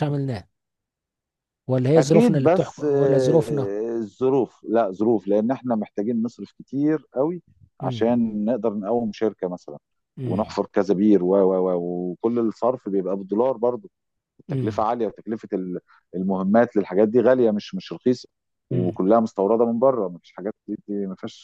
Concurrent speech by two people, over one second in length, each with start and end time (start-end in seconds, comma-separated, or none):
2.0-3.7